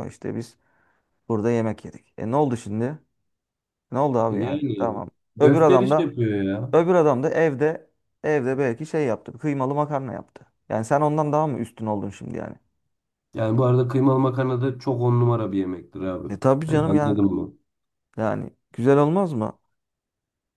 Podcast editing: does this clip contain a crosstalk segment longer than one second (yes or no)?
yes